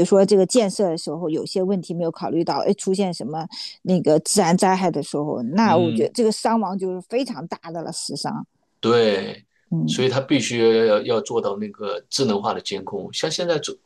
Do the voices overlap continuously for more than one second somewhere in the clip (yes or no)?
no